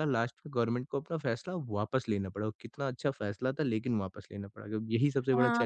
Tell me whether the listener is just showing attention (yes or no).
no